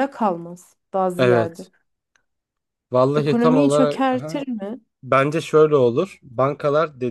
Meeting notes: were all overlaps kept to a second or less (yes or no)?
no